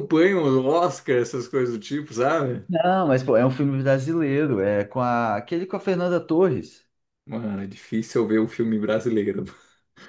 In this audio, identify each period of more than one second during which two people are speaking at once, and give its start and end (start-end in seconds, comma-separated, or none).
none